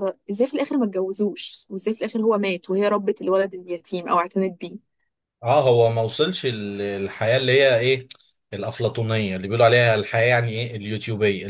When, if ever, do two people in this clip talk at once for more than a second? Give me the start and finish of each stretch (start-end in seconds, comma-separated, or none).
none